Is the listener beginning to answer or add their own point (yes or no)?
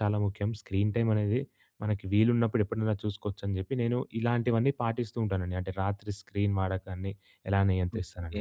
yes